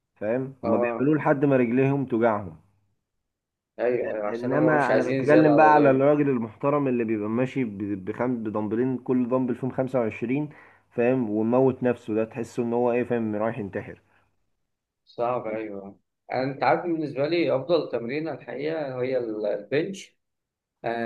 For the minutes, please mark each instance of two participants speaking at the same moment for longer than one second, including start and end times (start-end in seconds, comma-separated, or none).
4.3-6.1